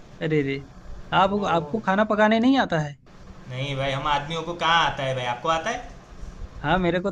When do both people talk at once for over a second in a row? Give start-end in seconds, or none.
none